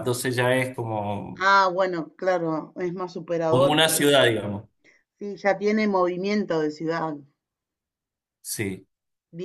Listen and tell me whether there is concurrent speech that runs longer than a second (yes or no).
no